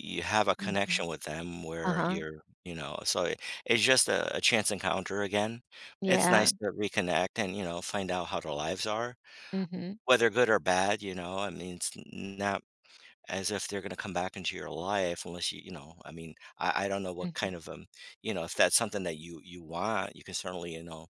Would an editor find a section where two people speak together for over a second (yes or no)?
no